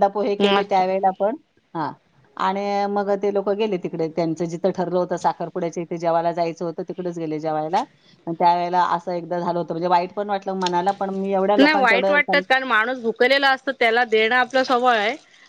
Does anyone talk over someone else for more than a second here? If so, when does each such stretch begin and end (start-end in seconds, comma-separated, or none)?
none